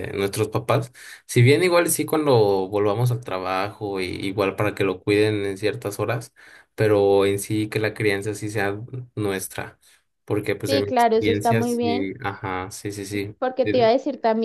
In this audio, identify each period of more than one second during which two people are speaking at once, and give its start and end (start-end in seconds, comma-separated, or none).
10.7-12.1